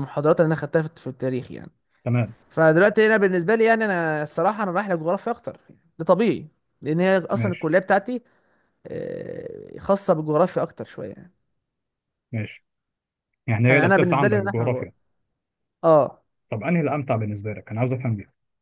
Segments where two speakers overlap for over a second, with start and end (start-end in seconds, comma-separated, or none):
13.7-14.9